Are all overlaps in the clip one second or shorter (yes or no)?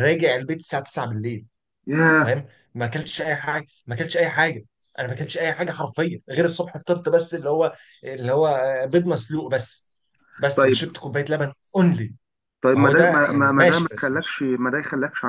no